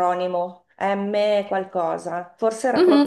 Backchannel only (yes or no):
no